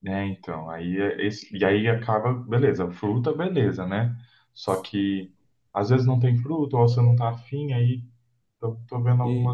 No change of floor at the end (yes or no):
yes